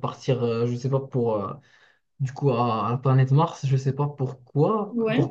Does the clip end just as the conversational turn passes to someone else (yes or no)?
no